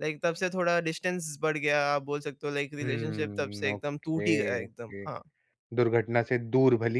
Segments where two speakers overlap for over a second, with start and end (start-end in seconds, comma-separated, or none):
2.8-5.1